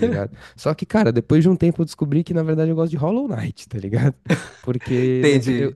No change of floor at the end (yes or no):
yes